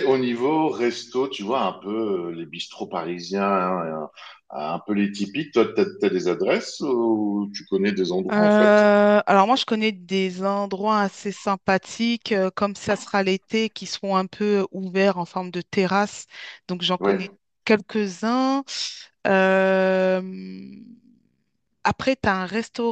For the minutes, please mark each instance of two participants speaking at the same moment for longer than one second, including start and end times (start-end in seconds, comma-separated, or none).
none